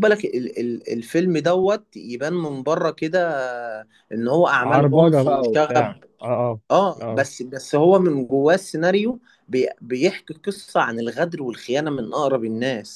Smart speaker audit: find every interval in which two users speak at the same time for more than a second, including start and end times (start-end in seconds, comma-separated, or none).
4.6-5.9